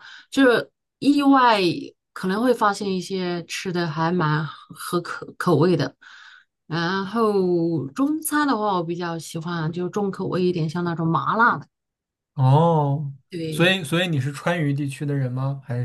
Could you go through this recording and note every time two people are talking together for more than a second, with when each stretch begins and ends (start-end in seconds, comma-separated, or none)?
none